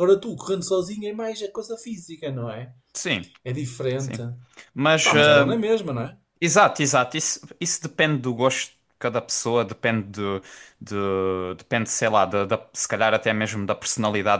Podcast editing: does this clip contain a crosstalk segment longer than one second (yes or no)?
no